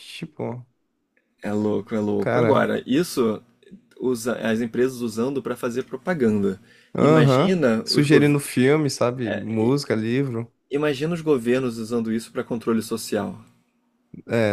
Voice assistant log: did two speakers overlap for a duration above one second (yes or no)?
yes